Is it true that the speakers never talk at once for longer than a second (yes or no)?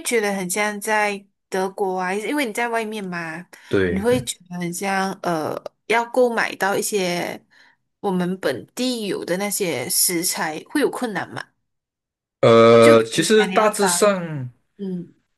no